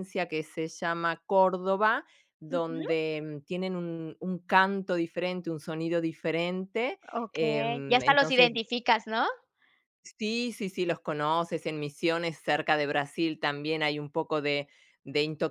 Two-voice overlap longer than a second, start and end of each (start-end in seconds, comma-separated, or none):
7.1-8.5